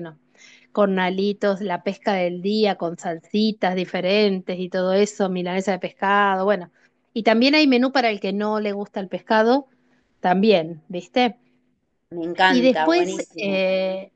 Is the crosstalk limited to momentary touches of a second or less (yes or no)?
no